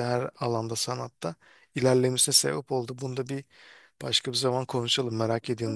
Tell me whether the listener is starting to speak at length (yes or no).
yes